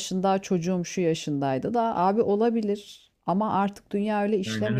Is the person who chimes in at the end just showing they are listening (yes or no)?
no